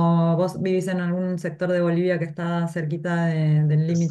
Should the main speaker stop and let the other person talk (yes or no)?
yes